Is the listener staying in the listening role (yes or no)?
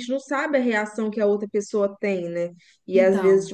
yes